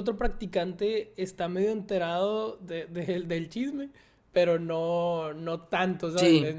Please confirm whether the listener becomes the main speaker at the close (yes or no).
no